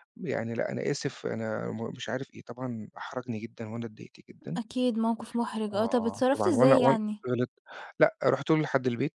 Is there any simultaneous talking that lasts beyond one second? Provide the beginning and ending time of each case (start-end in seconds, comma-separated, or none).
5.7-7.2